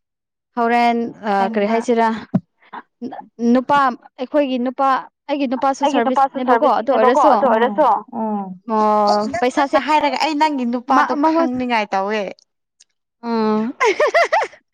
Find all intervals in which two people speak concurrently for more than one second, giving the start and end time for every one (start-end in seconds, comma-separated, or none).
5.8-7.3